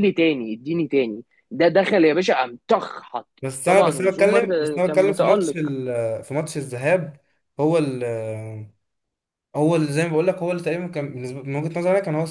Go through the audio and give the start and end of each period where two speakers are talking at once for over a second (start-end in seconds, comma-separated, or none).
3.6-5.6